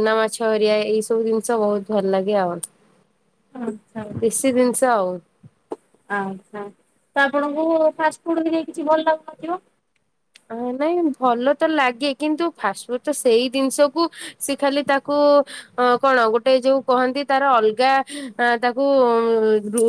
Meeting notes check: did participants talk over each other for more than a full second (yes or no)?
no